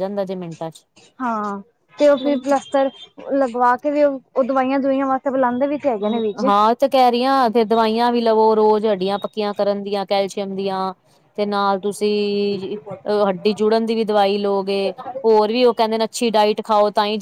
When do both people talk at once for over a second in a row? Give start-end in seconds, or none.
none